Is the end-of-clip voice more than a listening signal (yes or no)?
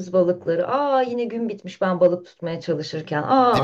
yes